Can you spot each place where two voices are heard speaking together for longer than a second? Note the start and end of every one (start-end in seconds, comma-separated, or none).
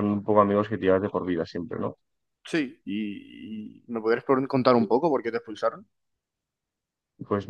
none